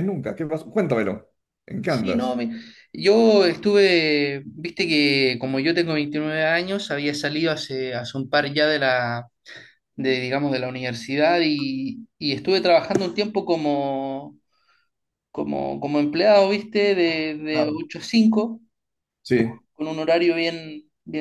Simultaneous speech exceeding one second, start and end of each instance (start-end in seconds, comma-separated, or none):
none